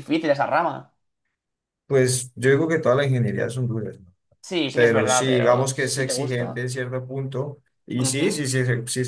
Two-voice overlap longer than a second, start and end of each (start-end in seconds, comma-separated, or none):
4.7-6.7